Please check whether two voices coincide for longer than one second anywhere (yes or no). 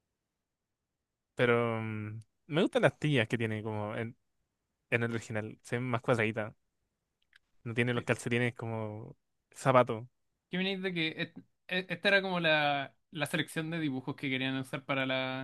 no